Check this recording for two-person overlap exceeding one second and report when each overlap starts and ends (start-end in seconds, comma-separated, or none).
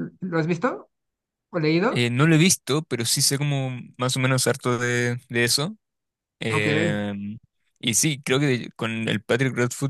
none